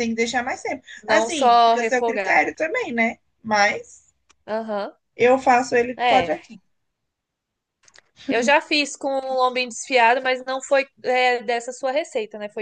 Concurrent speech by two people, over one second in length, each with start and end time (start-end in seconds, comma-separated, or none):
1.1-2.4